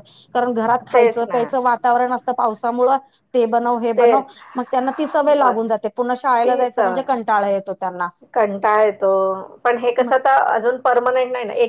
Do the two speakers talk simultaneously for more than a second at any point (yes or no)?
no